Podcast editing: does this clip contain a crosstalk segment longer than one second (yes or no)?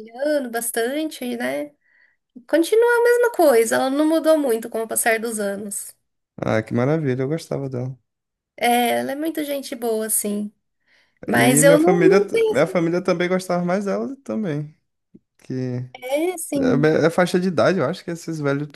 yes